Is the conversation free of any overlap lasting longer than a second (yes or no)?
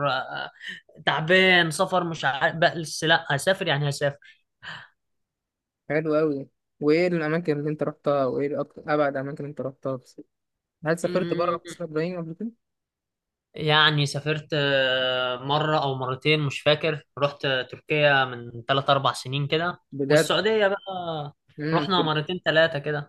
yes